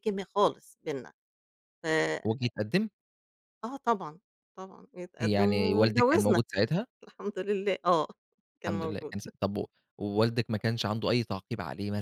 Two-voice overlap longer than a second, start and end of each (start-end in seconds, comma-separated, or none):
5.2-6.4